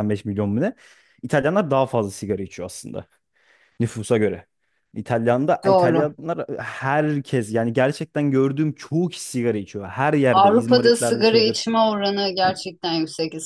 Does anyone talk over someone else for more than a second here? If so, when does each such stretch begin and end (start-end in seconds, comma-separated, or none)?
10.3-11.7